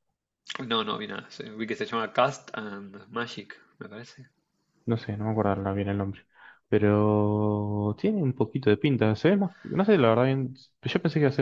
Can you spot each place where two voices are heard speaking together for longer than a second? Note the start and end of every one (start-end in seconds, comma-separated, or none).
none